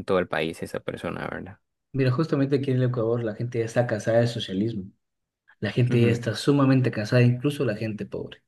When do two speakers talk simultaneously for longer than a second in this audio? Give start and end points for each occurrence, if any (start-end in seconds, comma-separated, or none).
none